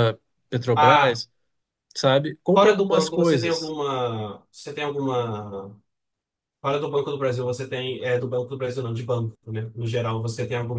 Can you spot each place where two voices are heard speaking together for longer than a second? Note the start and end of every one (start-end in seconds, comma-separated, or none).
2.5-3.7